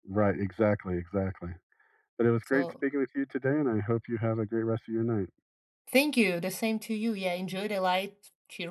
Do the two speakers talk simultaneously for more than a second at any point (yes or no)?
no